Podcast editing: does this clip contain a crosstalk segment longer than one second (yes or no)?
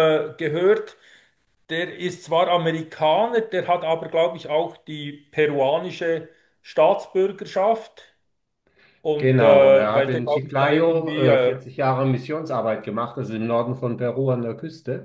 yes